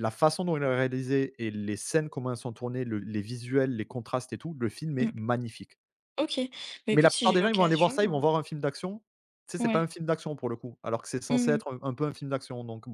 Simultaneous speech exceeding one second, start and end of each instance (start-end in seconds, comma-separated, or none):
6.9-8.1